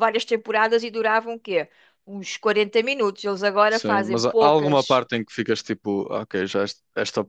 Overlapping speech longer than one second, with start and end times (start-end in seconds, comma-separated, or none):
3.7-5.0